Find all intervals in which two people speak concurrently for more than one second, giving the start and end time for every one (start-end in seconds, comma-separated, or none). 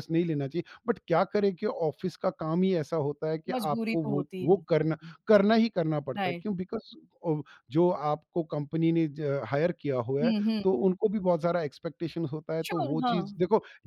3.5-5.2